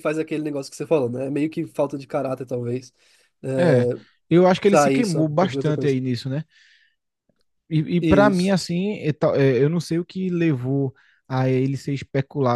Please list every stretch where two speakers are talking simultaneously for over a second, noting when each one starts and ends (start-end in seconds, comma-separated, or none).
4.6-6.0